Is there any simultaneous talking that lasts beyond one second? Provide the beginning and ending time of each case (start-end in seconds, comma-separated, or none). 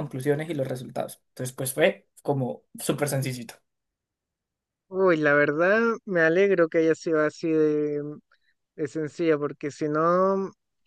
none